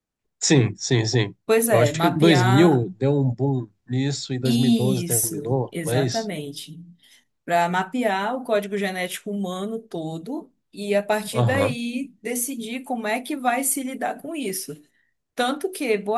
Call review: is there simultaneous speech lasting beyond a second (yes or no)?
yes